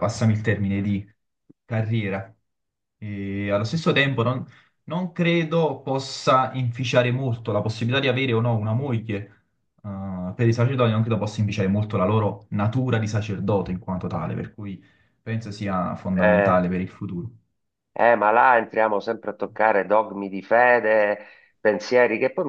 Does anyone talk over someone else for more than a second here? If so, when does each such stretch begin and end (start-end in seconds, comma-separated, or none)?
none